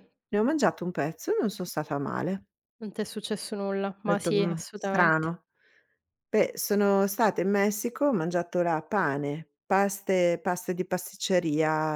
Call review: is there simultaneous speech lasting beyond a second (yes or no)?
yes